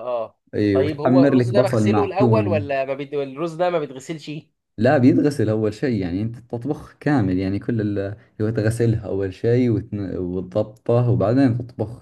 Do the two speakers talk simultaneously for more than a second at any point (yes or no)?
yes